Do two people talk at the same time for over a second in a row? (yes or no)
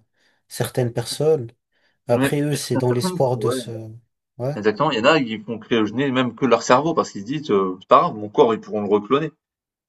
yes